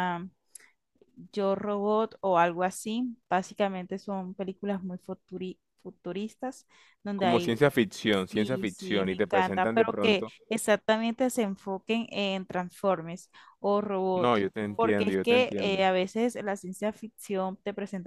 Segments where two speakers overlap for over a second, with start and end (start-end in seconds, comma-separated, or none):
8.3-10.3, 14.1-15.8